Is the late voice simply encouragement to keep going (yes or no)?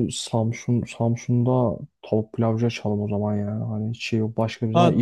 no